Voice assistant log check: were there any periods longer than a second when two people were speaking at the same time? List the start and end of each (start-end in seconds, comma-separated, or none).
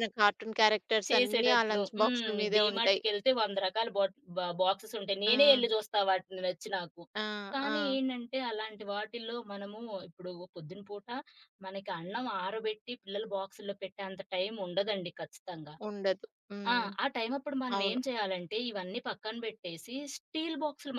1.1-3.0